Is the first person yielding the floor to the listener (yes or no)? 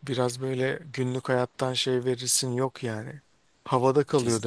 no